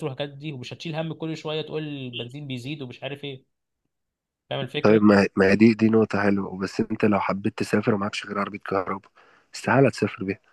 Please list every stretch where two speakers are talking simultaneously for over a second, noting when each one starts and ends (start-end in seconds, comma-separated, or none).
none